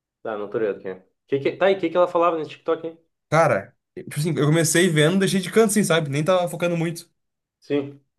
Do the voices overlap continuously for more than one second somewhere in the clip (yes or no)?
no